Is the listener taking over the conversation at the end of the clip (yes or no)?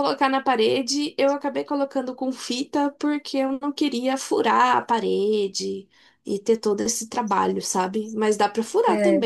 no